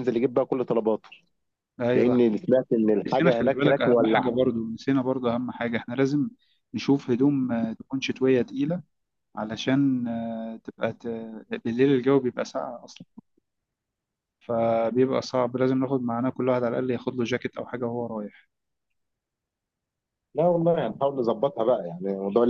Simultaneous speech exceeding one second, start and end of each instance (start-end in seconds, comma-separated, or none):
3.1-4.3